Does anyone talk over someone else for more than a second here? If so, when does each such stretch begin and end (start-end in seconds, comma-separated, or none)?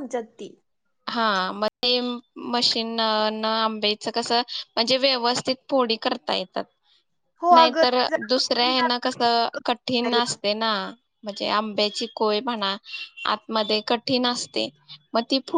7.5-9.2